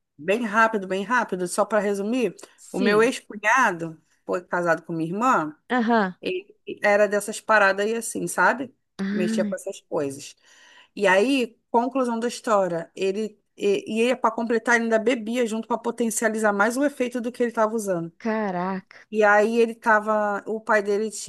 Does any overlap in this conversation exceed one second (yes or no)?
no